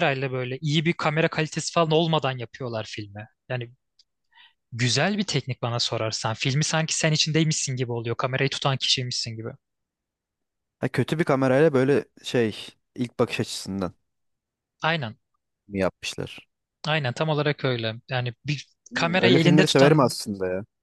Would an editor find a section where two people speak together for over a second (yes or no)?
yes